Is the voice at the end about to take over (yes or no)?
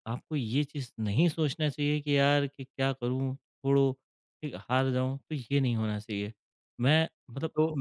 yes